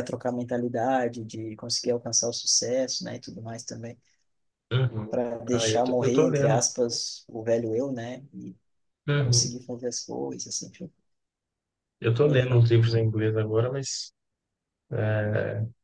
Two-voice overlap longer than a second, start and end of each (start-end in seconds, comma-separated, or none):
5.1-6.7